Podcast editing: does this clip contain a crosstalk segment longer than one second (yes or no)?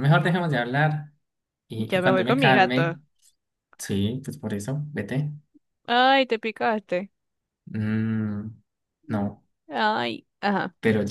yes